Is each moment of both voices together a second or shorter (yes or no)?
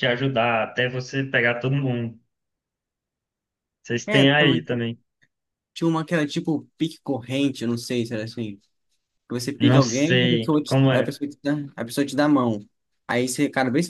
no